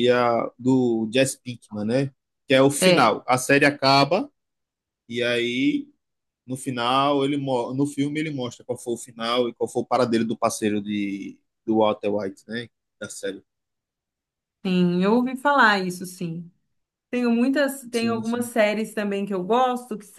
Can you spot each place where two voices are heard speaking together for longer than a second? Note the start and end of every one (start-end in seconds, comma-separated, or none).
none